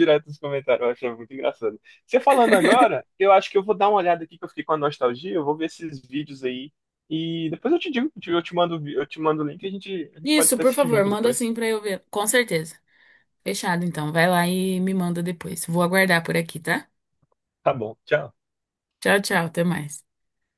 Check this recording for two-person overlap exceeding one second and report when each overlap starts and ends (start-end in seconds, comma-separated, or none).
10.2-11.5